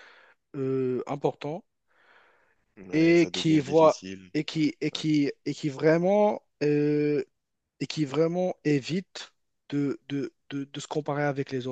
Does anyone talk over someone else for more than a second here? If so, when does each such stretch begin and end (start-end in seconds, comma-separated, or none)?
2.9-4.6